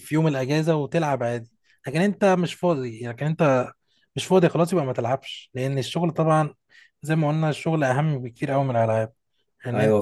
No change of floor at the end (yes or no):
no